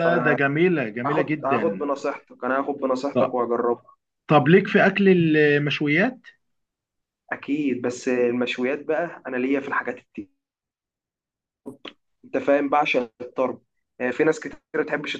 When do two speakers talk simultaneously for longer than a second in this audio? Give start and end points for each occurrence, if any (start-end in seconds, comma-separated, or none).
0.7-1.9